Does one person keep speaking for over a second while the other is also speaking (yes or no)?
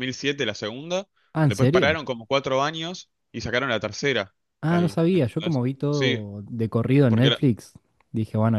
yes